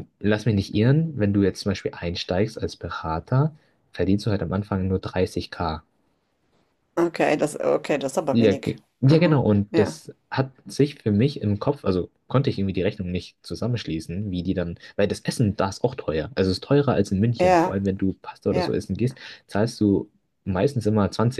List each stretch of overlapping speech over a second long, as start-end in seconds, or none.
8.3-10.0